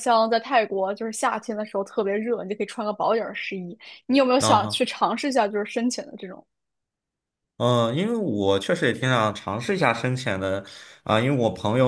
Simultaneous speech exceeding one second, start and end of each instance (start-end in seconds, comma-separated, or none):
none